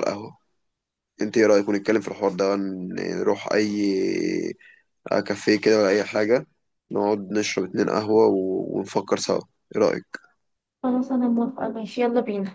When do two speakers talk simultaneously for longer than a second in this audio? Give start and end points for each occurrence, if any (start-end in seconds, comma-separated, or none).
none